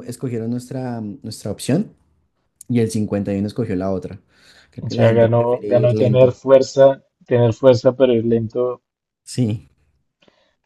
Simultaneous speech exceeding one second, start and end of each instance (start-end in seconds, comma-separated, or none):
4.8-6.4